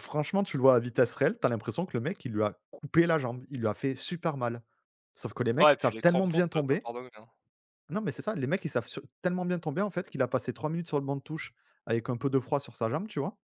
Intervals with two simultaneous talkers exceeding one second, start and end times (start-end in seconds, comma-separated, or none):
5.6-6.9